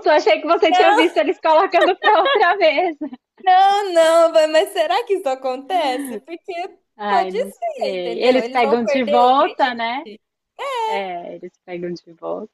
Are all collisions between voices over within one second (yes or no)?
no